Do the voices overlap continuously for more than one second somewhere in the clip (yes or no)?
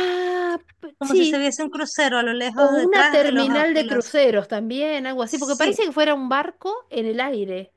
yes